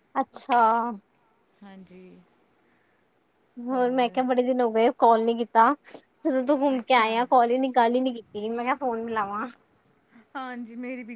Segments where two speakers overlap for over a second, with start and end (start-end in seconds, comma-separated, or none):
none